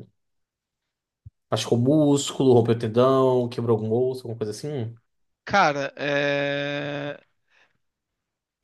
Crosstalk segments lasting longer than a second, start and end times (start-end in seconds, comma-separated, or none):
none